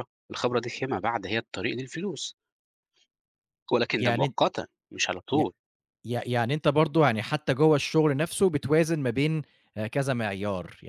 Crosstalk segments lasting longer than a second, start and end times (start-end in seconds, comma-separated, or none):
none